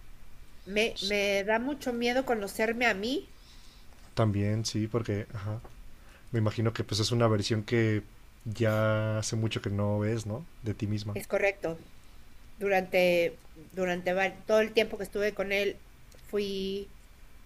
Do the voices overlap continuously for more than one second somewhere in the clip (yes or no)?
no